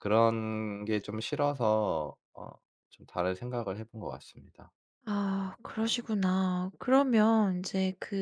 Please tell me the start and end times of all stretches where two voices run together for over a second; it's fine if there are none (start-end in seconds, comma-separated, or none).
none